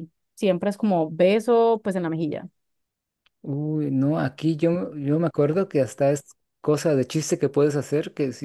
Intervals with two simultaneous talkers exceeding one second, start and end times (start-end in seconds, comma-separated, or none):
none